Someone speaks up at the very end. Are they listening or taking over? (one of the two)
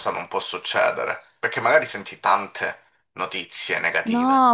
taking over